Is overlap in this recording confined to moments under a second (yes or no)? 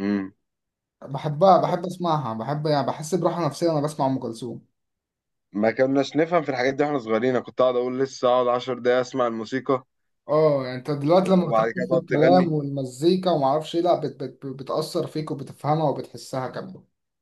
no